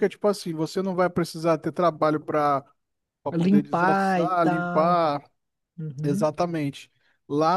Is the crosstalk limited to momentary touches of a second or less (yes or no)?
no